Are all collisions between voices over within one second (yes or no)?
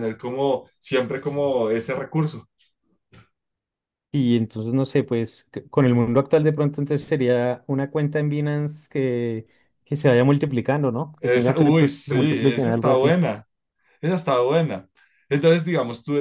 no